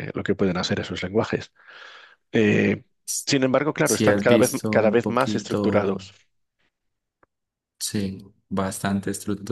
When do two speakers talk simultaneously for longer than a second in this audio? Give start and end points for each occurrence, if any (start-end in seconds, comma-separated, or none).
3.8-5.6